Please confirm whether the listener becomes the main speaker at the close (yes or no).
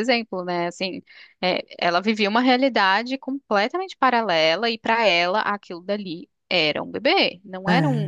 no